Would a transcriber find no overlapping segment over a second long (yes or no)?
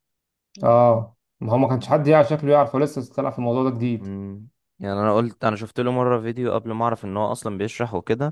yes